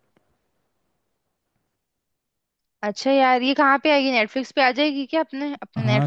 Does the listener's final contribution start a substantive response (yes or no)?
yes